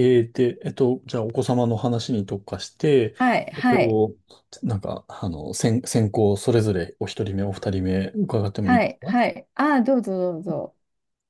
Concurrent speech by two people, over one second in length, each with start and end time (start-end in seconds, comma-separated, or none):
none